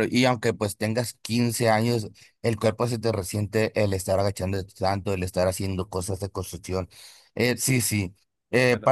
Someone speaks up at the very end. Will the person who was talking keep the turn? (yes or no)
yes